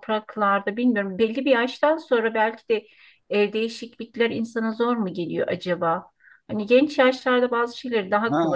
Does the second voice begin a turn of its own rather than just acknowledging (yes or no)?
yes